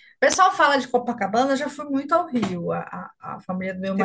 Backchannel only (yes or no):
yes